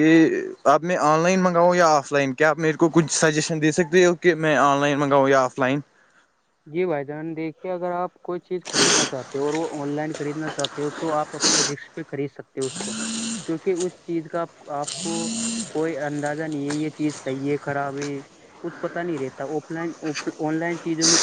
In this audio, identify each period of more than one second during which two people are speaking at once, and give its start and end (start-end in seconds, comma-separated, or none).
none